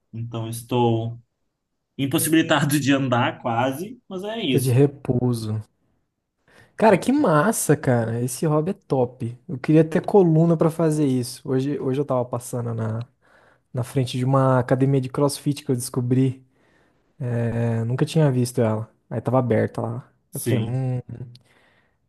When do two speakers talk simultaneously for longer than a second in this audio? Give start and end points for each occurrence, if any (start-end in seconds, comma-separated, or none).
none